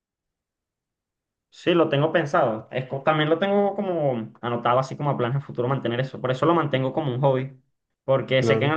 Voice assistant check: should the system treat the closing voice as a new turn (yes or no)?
no